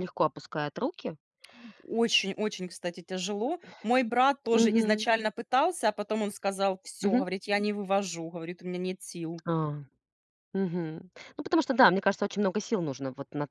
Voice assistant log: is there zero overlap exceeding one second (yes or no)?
yes